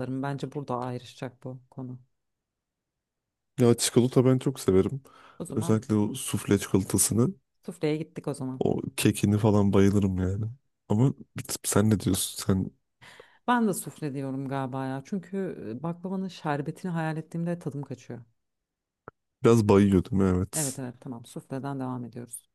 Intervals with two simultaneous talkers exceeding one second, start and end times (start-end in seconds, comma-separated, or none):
none